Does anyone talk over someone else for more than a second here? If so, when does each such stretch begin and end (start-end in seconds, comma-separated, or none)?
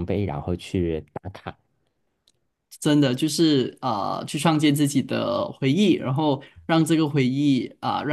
none